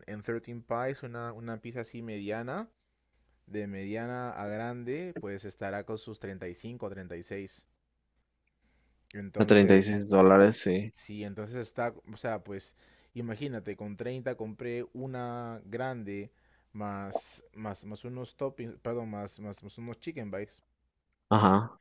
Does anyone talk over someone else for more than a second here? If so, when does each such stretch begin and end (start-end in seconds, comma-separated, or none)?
none